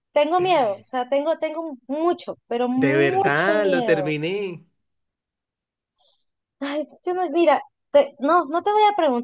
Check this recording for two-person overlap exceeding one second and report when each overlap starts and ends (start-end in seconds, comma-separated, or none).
2.8-4.2